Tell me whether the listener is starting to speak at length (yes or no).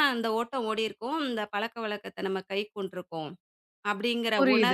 yes